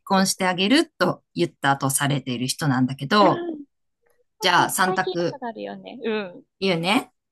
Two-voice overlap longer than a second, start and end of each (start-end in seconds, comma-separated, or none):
none